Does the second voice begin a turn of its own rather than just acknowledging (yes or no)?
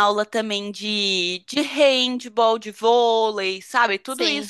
no